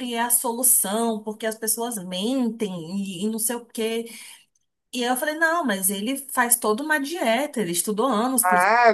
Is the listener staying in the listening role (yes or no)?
no